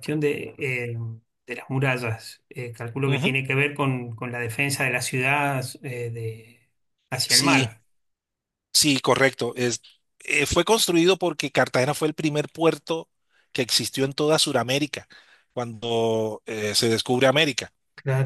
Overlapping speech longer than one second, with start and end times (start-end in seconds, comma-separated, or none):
none